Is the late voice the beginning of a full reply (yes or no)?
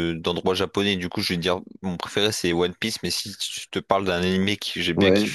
no